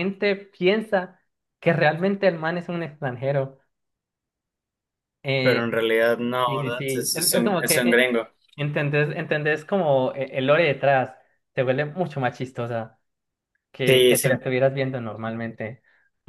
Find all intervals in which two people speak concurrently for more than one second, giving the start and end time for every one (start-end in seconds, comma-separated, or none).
6.5-8.1